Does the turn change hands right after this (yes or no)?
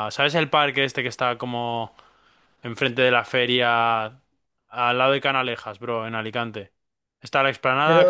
no